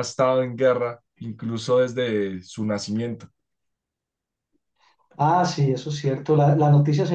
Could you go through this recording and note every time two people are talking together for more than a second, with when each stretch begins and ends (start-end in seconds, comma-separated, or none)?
none